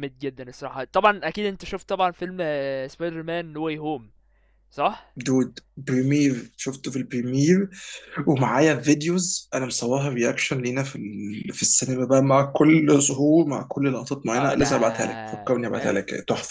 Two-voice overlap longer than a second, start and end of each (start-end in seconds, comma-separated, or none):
none